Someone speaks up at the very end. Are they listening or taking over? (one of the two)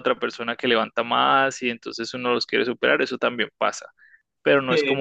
listening